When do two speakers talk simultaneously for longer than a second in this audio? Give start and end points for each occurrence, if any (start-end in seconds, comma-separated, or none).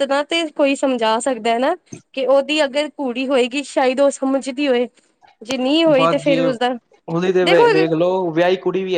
none